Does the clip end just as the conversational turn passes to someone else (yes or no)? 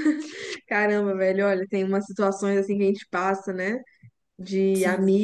no